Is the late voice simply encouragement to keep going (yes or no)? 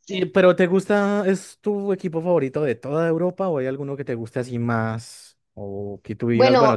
no